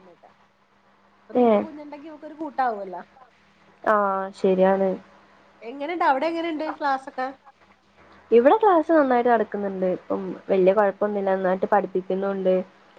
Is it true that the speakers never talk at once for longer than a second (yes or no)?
yes